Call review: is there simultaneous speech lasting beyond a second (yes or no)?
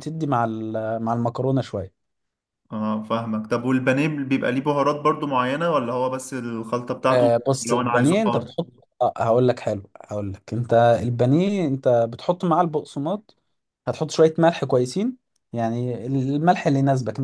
yes